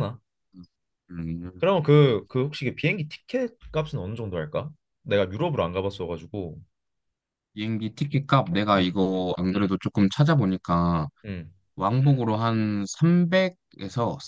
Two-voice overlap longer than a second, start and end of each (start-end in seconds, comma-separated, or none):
none